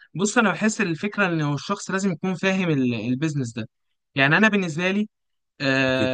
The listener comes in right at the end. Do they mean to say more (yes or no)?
yes